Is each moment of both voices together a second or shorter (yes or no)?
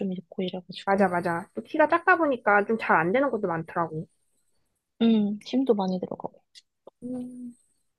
yes